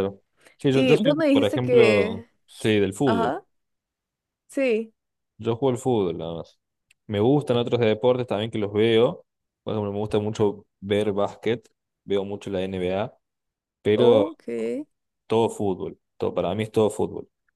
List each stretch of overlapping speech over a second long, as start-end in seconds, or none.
0.7-2.3